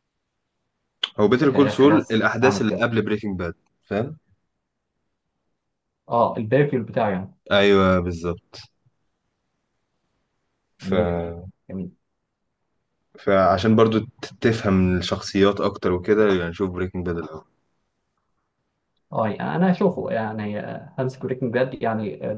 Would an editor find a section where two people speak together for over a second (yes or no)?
yes